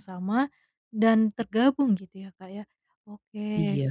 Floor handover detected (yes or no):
no